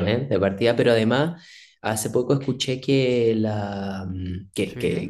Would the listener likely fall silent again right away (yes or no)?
yes